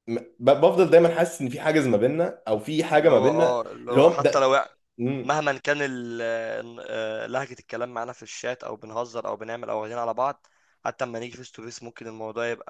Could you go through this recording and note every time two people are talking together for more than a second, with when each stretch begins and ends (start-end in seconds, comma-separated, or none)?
3.0-4.6